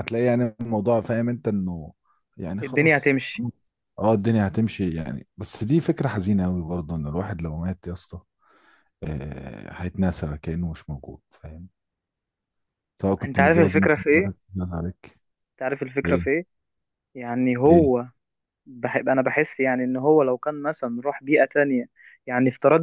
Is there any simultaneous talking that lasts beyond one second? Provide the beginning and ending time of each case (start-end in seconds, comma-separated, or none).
13.2-14.5